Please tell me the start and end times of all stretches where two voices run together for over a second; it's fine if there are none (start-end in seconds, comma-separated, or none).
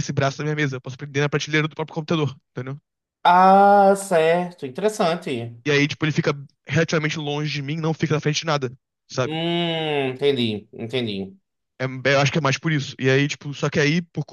none